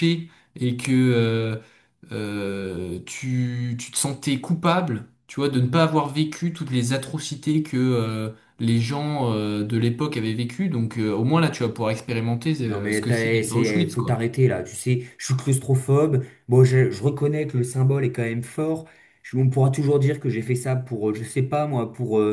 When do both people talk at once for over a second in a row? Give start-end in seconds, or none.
12.6-14.2